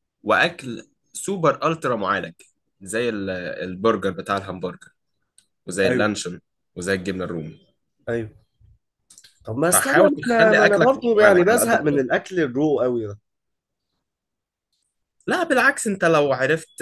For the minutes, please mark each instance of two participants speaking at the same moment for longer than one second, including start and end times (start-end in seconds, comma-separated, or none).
9.7-12.0